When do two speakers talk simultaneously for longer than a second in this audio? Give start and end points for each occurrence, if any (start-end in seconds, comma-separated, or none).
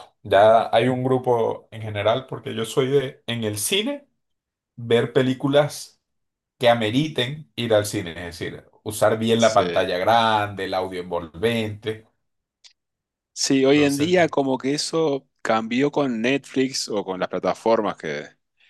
none